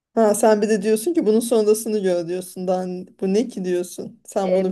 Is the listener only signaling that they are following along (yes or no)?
no